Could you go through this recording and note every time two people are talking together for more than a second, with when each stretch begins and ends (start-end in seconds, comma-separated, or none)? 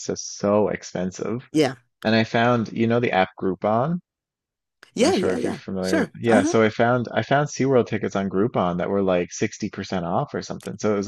5.0-6.5